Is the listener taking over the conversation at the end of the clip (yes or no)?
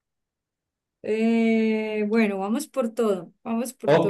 yes